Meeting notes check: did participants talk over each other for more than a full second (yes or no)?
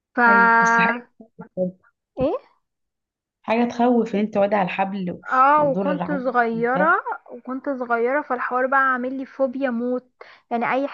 yes